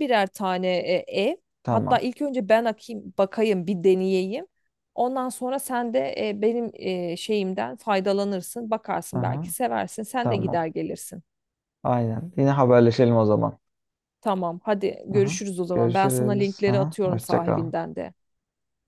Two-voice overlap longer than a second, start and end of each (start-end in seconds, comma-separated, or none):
15.2-17.7